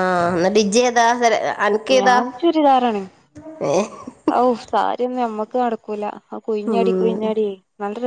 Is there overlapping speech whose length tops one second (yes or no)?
no